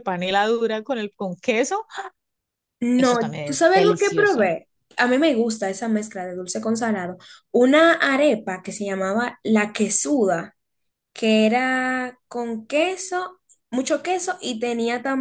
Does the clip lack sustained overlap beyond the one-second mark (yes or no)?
no